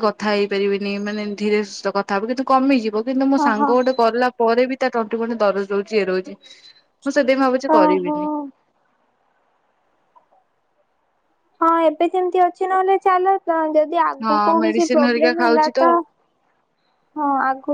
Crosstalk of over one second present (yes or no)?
yes